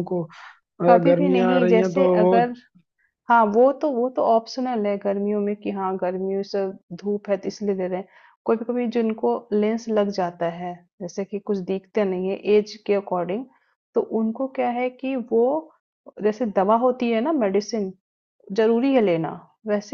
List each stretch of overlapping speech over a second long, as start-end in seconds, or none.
0.9-2.4